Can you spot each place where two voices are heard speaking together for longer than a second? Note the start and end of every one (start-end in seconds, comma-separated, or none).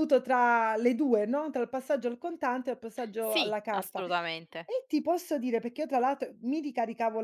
3.2-4.7